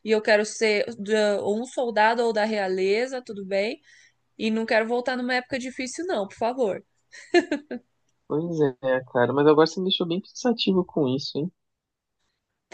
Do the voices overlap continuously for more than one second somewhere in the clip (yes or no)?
no